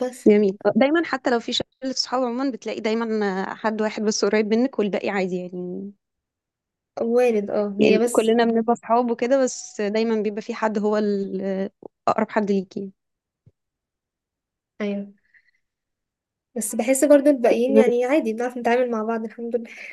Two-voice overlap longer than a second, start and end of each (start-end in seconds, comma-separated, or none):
none